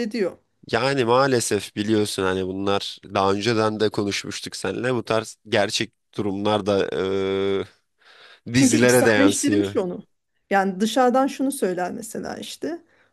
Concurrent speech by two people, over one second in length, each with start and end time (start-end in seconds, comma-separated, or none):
8.6-9.8